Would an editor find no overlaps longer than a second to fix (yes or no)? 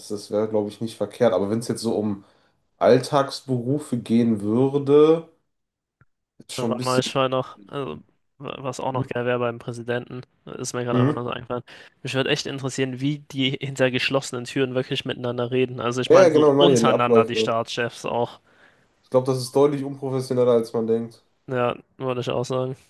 no